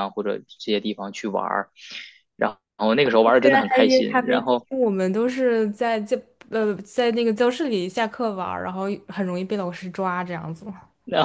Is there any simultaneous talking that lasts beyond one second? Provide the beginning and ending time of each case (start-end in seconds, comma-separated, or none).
3.2-4.7